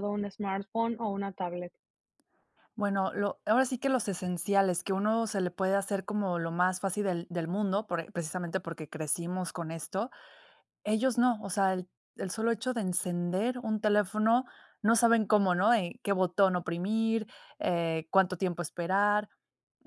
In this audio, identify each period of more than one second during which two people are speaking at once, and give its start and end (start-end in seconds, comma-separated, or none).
none